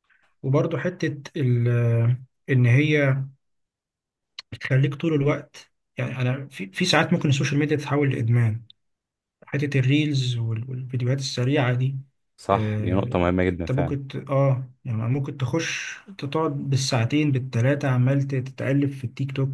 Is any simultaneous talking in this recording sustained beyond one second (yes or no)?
yes